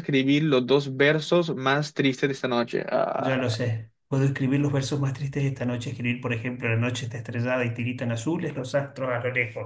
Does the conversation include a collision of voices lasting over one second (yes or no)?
no